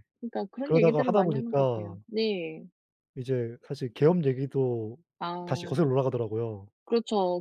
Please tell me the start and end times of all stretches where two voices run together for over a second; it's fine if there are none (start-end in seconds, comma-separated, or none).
0.6-1.9